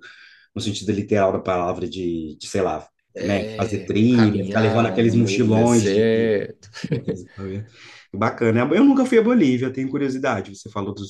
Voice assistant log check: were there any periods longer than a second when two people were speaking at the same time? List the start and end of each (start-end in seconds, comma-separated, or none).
3.1-6.3